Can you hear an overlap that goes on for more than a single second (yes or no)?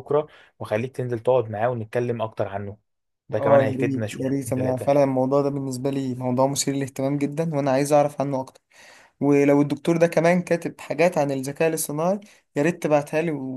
yes